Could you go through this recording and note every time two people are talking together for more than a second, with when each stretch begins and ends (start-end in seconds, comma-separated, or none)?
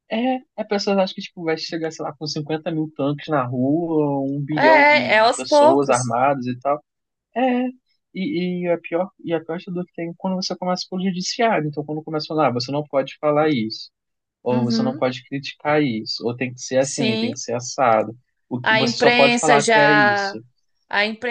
4.5-6.2, 18.6-20.4